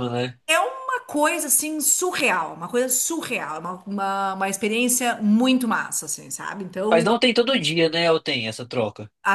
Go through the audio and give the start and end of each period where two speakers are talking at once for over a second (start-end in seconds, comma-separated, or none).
none